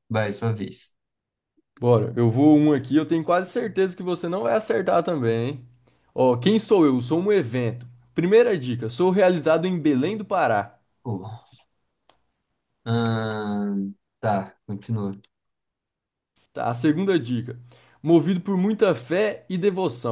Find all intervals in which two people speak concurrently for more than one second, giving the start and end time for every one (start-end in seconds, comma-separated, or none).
none